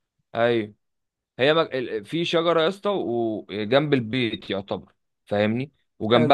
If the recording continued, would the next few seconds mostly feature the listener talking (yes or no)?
no